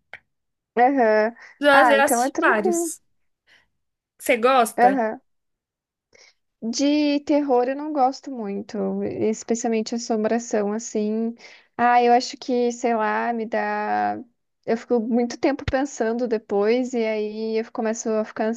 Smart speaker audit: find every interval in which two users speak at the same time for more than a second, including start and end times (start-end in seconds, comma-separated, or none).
1.7-2.9